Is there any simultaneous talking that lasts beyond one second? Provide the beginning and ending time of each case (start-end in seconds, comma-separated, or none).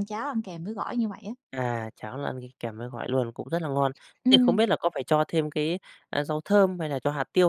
none